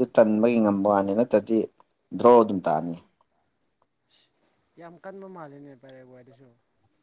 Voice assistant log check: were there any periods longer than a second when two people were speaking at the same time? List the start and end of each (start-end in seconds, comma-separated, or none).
none